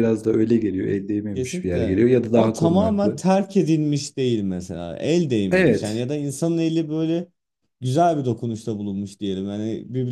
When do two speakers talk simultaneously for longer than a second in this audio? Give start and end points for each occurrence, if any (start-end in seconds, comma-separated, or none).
1.3-3.2